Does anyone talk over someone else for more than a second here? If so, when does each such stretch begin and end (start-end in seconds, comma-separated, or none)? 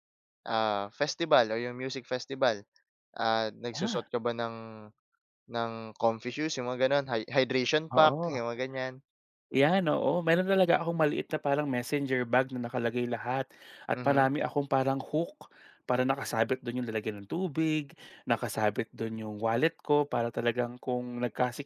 none